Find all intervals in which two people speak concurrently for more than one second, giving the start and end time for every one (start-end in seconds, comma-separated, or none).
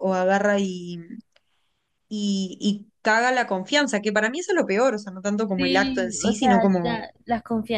5.6-7.1